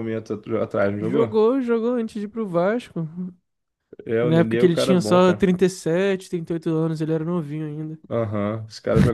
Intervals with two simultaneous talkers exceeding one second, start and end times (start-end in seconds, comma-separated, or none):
4.2-5.5